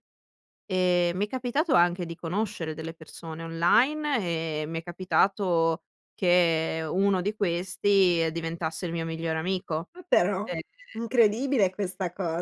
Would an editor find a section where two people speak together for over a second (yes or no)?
no